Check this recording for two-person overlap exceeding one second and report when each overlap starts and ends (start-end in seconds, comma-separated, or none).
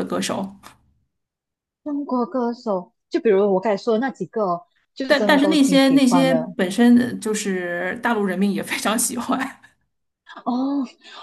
5.1-6.5